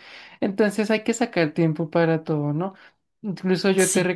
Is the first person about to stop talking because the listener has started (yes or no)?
no